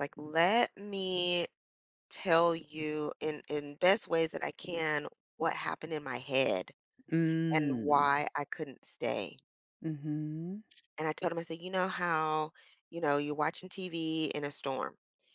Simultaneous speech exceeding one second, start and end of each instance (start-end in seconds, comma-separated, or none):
none